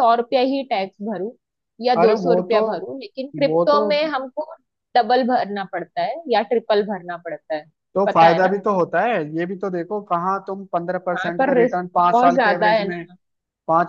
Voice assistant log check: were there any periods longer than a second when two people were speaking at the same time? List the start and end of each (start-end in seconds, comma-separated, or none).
11.1-13.0